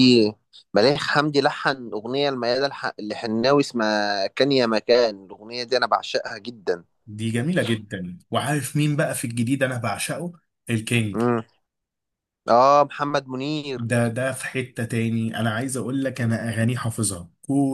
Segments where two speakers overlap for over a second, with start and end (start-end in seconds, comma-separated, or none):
none